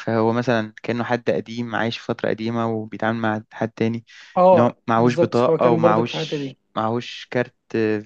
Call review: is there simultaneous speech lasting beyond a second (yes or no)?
yes